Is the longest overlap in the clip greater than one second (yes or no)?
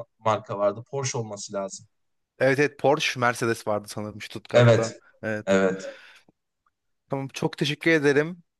no